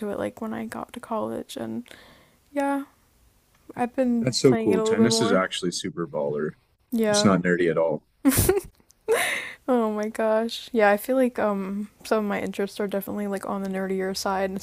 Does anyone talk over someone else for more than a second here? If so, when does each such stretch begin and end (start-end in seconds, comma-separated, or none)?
4.2-5.4